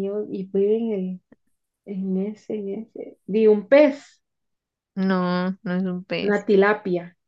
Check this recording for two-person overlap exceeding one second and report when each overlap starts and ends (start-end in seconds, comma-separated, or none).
none